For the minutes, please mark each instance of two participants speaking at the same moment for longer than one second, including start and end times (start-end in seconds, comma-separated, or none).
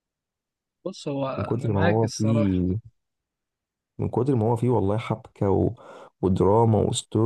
1.4-2.6